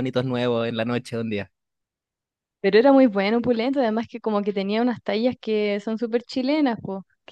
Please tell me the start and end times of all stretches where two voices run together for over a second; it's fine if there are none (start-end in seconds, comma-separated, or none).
none